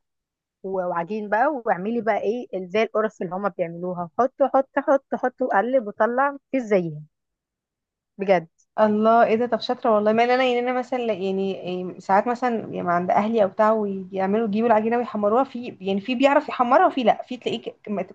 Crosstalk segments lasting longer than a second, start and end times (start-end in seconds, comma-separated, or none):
none